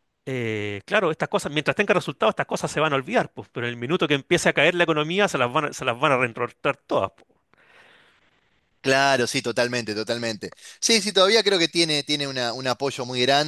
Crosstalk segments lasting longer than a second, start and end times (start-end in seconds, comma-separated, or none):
none